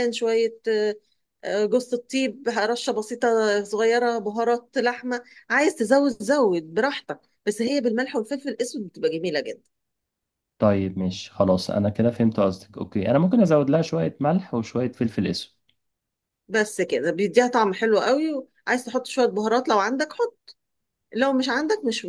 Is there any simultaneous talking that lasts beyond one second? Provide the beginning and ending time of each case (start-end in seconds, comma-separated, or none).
none